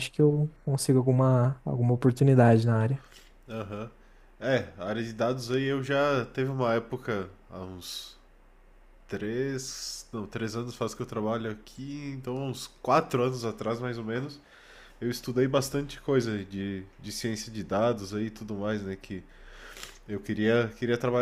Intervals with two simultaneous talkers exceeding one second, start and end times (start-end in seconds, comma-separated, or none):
none